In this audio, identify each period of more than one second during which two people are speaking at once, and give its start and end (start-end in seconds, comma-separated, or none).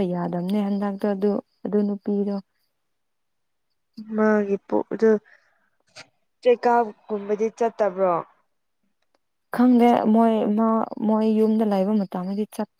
none